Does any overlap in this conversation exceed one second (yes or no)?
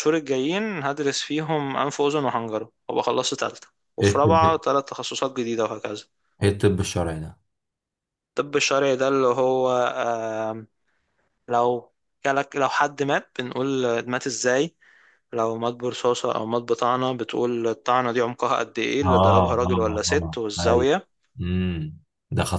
yes